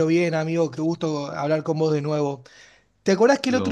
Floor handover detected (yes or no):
no